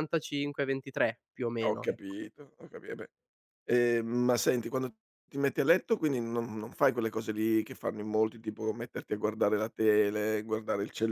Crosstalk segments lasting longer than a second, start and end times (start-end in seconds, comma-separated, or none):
none